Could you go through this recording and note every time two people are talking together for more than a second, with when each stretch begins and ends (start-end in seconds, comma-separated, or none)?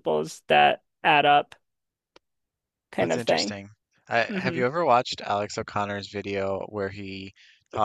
none